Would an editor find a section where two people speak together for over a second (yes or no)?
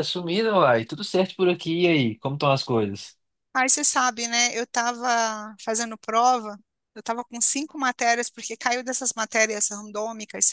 no